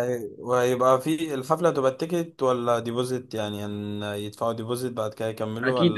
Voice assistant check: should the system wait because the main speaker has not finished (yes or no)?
no